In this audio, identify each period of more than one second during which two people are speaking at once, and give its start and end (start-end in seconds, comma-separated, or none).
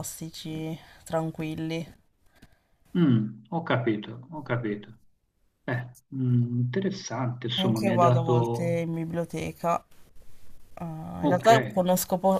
7.6-8.8